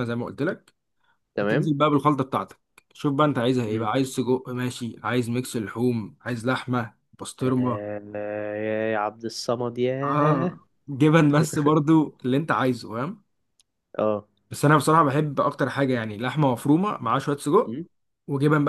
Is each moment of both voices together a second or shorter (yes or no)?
yes